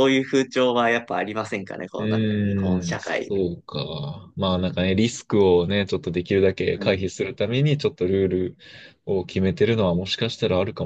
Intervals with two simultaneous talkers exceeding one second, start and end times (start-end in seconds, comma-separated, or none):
2.0-3.3